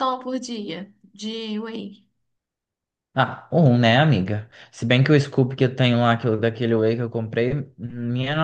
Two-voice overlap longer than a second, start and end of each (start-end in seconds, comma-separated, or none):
none